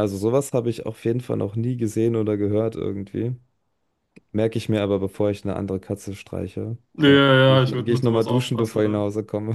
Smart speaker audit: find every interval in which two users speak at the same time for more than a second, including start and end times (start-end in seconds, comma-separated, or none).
6.9-9.1